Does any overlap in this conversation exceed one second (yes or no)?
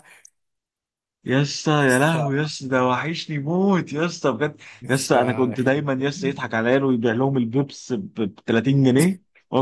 yes